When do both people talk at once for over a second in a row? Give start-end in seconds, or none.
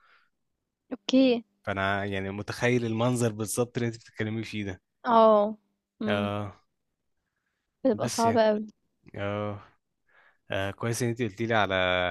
none